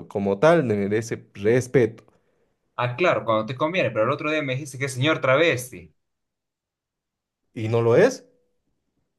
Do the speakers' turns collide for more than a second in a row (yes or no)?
no